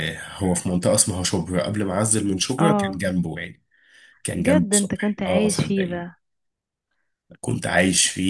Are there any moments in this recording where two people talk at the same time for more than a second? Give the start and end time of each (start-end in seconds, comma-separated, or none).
4.4-6.1